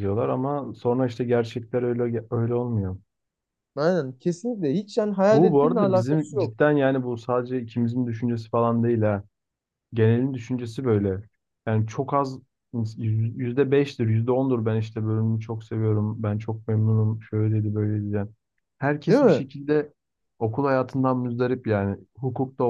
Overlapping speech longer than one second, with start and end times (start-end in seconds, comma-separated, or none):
5.3-6.6